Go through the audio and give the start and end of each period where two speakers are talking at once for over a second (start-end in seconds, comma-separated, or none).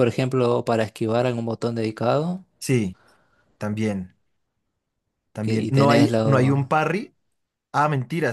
5.4-6.7